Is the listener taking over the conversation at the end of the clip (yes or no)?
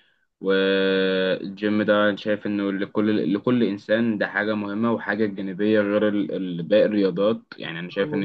yes